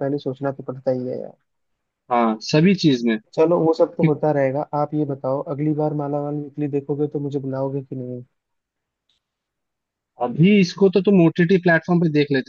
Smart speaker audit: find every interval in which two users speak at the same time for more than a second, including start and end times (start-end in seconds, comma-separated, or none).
none